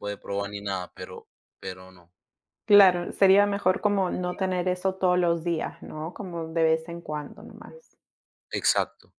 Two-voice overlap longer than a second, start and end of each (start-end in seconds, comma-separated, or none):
none